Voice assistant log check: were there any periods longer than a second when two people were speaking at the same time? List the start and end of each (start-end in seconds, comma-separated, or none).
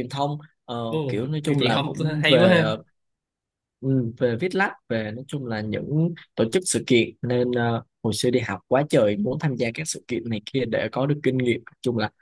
0.9-2.8